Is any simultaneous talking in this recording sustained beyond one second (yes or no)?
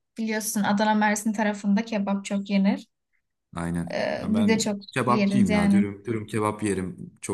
yes